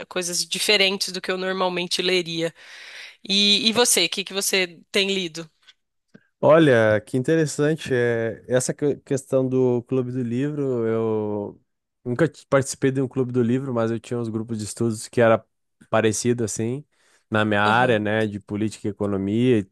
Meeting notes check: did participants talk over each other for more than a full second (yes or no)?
no